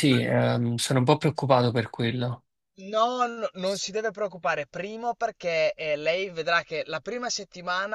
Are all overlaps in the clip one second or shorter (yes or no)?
yes